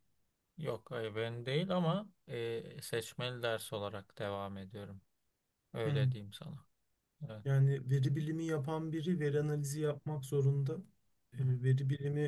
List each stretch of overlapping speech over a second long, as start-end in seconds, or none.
none